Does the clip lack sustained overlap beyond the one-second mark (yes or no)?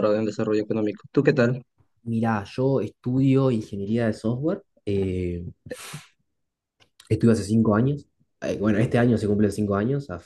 yes